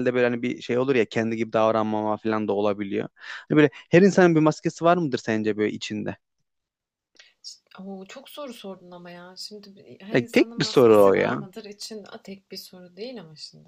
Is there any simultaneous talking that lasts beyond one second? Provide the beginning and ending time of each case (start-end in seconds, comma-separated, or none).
10.1-11.4